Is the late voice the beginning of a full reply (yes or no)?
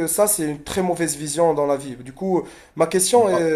no